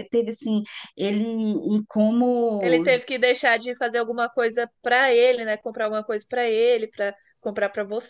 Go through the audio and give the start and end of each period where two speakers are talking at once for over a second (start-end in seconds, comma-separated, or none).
none